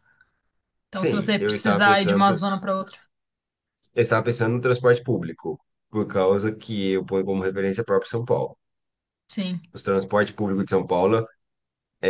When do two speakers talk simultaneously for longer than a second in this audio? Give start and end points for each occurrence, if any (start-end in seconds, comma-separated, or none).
0.9-2.4